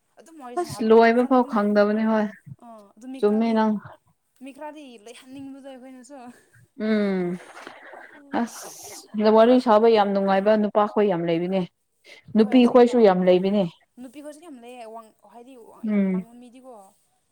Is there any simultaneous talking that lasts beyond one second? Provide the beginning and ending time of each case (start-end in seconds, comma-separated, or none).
0.6-2.0